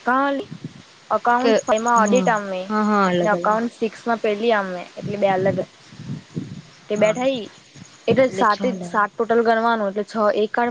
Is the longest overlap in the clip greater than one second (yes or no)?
yes